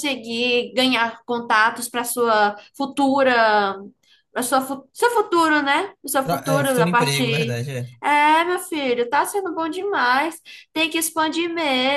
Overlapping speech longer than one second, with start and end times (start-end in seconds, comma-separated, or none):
6.2-7.6